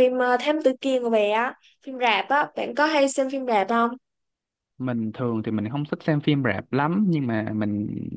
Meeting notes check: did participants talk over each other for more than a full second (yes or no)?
no